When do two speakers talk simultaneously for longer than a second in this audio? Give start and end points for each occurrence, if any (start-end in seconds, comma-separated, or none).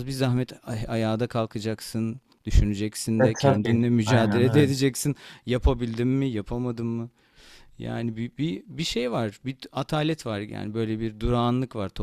3.2-4.7